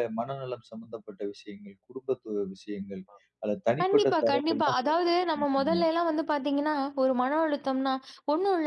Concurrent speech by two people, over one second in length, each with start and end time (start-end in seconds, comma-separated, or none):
3.8-5.8